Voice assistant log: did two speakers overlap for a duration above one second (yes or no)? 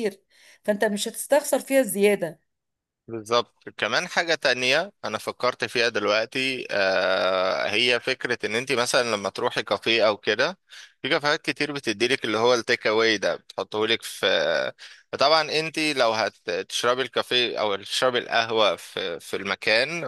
no